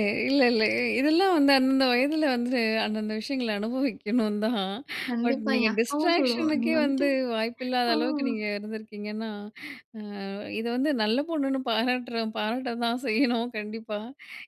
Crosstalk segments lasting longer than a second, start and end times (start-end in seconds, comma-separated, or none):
5.2-7.1